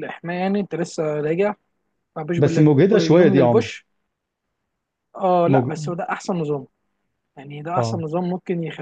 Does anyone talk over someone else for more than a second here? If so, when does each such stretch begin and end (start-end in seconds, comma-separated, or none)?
2.4-3.7